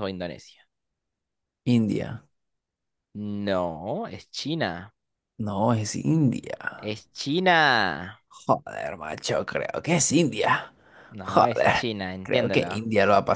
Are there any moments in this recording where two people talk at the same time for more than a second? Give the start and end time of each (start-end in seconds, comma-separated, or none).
11.2-12.7